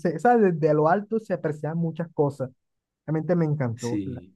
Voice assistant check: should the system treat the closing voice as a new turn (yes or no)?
yes